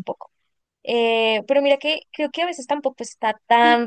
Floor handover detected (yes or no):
no